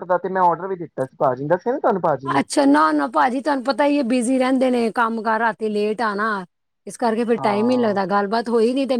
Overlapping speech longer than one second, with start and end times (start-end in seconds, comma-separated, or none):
none